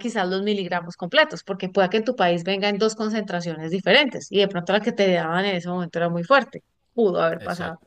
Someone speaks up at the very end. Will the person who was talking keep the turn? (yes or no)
no